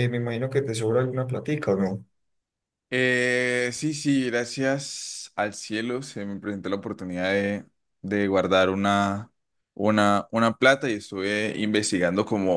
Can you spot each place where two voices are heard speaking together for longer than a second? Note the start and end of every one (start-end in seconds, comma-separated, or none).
none